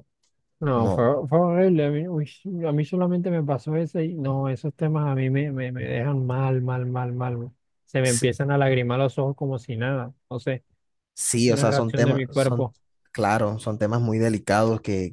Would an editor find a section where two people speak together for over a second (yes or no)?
yes